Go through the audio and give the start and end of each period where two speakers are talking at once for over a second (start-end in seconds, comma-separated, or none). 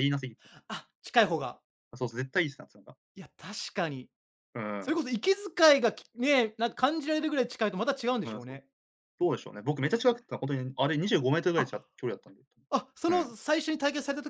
none